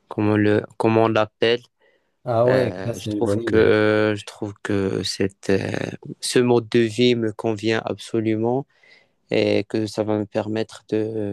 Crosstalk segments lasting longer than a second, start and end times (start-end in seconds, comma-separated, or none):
2.5-3.7